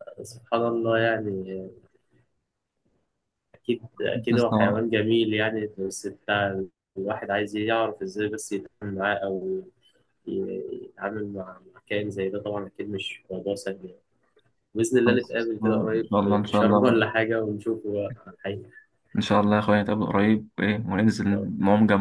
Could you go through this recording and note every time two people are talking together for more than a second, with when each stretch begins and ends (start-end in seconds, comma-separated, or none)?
15.1-17.0